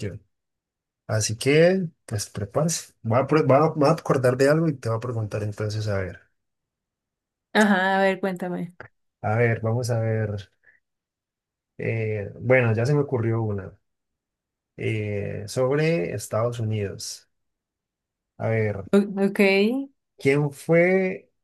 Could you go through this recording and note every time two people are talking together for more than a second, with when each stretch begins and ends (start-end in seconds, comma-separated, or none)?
none